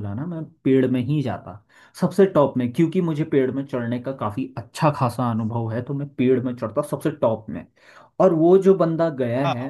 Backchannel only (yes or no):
yes